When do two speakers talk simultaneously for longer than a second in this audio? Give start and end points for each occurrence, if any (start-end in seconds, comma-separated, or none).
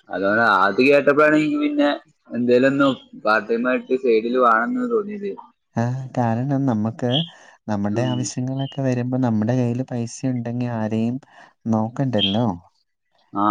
none